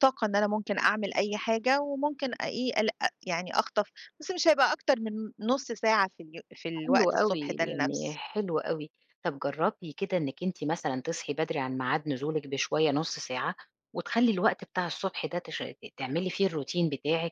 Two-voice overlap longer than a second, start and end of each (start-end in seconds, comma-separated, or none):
6.8-8.2